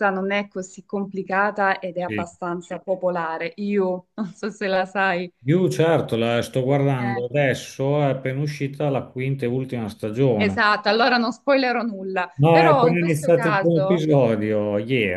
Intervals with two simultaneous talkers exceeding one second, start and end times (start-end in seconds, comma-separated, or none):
12.4-14.0